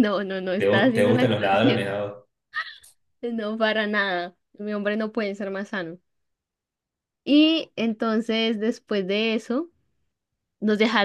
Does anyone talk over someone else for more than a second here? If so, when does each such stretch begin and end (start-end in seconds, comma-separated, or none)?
0.6-1.9